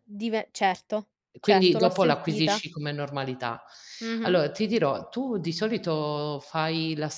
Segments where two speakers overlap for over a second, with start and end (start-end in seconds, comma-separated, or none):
1.4-2.6